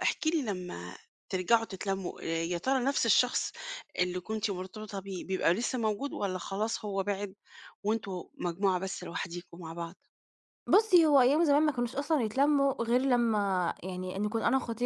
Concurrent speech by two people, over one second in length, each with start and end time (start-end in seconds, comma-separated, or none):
none